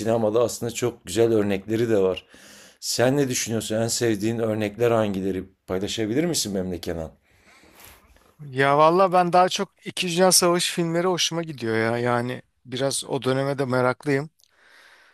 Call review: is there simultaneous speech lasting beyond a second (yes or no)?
no